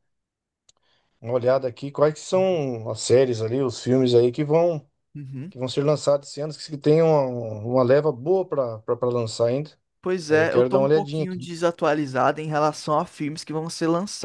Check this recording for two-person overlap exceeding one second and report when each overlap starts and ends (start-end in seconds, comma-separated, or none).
10.3-11.5